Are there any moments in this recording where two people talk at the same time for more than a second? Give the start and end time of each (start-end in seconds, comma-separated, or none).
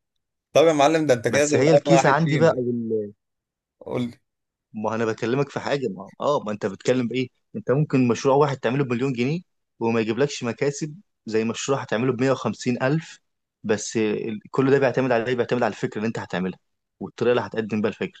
1.3-2.6